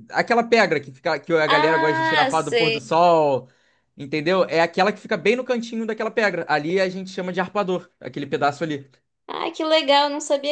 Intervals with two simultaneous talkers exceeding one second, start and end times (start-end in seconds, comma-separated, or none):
1.5-2.9